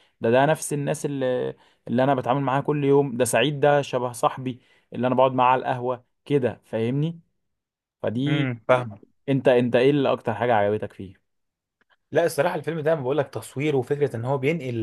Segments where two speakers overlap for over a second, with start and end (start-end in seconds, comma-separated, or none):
none